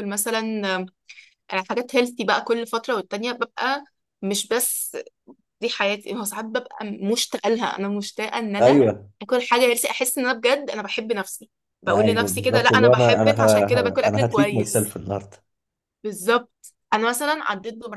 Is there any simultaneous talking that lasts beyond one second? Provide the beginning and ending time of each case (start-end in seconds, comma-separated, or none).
11.9-14.9